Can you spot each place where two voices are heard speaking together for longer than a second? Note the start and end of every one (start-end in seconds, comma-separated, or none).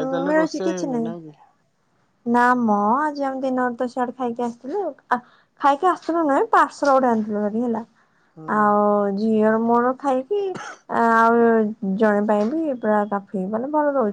none